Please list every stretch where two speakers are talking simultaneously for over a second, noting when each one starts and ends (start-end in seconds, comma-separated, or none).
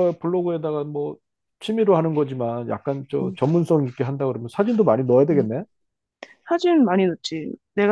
none